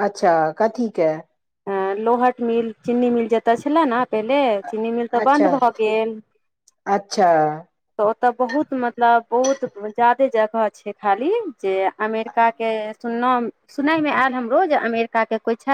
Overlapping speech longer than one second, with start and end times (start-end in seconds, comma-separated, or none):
none